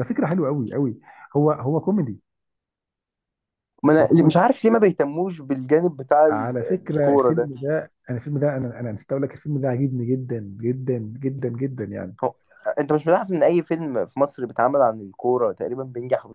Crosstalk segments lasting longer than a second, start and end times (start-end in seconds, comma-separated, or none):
6.3-7.5